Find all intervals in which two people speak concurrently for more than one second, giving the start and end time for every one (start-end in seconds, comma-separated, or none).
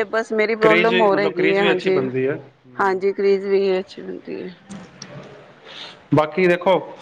0.6-2.0